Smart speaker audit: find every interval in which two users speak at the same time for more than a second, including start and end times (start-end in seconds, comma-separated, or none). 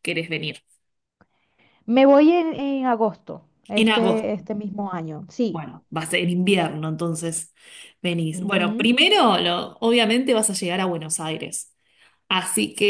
none